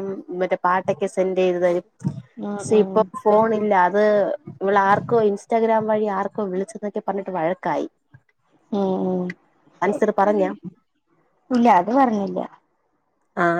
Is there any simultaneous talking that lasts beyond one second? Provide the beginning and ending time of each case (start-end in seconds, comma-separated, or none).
none